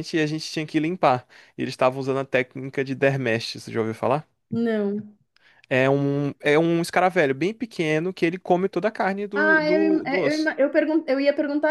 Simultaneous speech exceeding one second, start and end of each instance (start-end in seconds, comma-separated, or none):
9.3-10.6